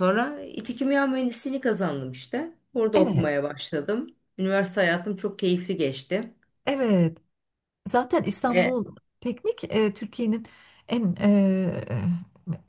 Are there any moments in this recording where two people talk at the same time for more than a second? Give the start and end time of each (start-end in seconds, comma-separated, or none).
none